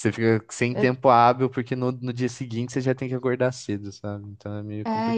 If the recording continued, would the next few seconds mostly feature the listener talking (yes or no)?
yes